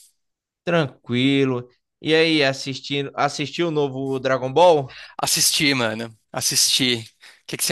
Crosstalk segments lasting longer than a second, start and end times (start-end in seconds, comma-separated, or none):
none